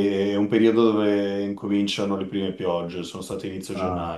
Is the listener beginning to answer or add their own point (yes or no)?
yes